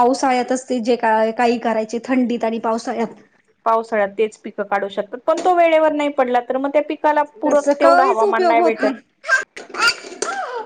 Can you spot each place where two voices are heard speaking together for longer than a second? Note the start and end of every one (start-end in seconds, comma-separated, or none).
7.4-8.8